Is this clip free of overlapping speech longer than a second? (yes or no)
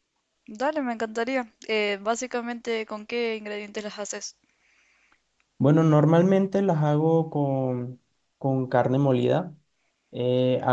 yes